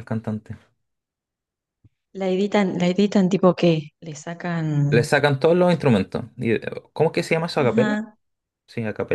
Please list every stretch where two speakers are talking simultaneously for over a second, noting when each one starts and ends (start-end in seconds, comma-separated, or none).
none